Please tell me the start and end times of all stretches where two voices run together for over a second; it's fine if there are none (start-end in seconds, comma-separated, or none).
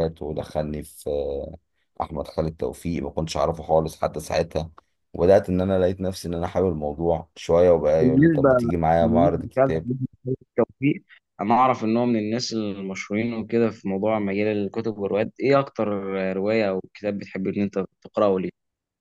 8.0-9.9